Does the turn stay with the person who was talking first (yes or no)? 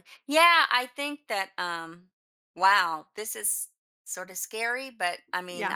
yes